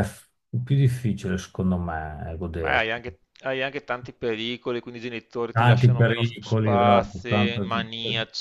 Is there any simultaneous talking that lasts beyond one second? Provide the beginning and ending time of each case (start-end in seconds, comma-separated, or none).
5.5-7.7